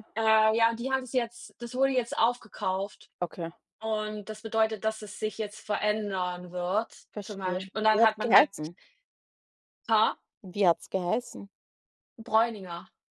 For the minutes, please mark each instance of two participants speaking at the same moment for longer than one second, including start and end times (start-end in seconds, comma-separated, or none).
7.1-8.5